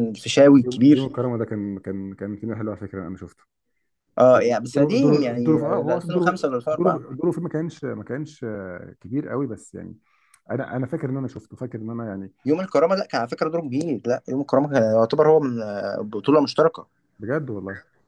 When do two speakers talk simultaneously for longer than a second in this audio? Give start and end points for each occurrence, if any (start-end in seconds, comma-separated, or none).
4.3-7.0